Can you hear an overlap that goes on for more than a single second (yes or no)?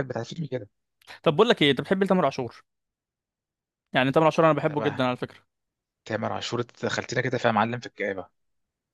no